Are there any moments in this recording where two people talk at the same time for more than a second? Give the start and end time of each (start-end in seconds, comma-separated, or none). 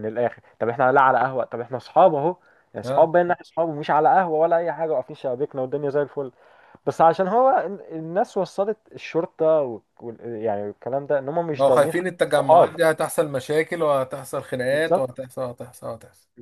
11.5-12.8